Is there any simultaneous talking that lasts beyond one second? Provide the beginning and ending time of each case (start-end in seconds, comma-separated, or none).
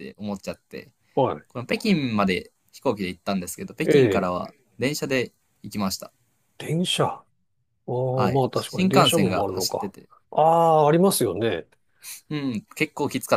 8.1-9.9